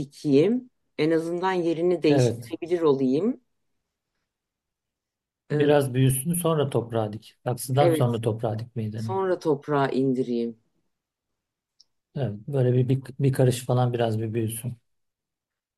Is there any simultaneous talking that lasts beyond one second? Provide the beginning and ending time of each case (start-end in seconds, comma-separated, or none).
none